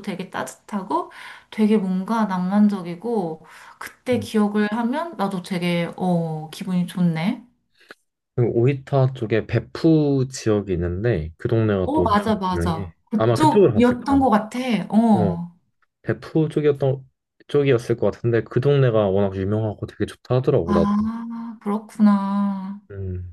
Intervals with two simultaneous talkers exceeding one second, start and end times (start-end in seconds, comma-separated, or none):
11.8-14.3